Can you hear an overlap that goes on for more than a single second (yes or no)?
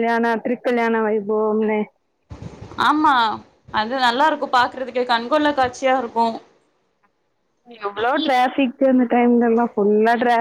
no